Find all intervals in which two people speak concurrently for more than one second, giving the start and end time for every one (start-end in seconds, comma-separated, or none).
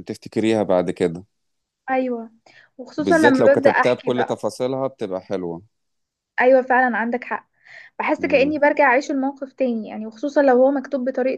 3.0-4.4